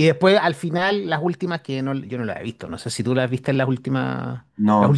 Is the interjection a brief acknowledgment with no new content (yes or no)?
no